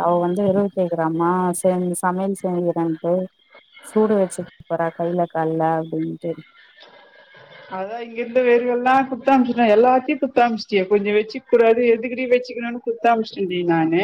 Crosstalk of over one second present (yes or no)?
no